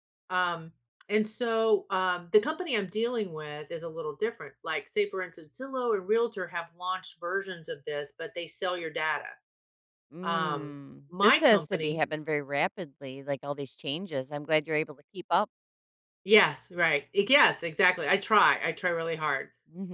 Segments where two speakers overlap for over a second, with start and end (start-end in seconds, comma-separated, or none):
10.2-12.0